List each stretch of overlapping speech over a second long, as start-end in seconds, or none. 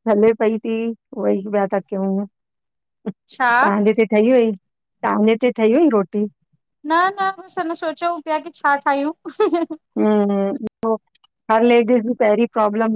none